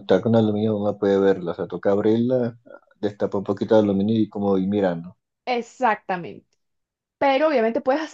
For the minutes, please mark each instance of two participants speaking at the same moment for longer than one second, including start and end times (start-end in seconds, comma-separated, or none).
none